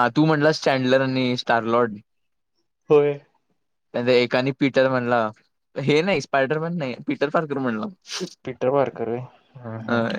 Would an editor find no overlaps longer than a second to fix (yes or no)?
yes